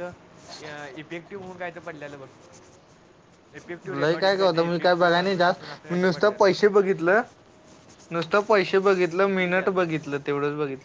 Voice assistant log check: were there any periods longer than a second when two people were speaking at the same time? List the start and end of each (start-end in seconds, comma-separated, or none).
4.0-6.8